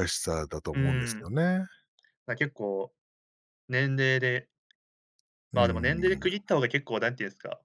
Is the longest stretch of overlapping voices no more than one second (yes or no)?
yes